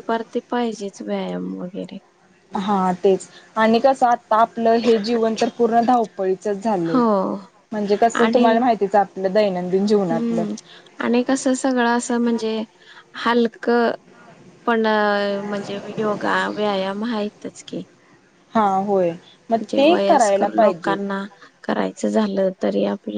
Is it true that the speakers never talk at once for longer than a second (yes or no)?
no